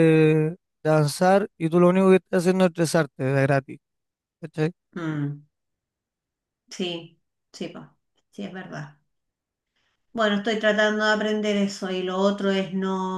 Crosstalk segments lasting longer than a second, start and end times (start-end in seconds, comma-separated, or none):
none